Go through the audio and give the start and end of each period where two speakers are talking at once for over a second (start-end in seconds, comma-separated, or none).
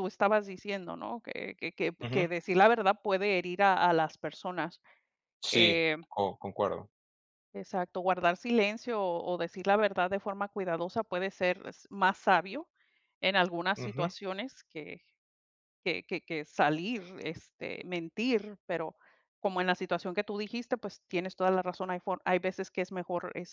none